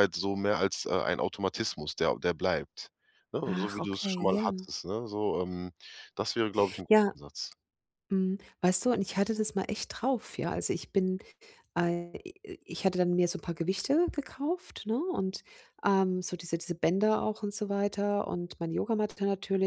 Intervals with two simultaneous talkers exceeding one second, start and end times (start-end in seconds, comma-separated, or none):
3.5-4.7